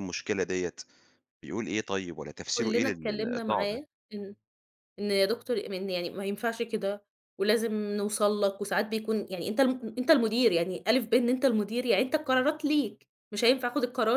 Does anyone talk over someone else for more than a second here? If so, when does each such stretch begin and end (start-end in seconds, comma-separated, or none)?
2.6-3.8